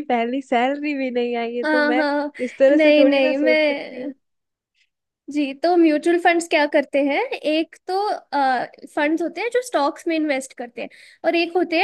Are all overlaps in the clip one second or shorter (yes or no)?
no